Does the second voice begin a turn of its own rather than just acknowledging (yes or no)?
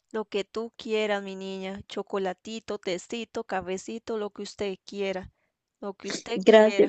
yes